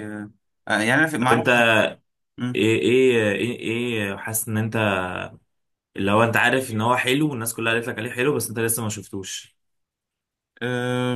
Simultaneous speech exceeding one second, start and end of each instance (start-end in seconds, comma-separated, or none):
none